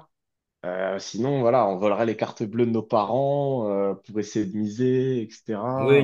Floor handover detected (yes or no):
yes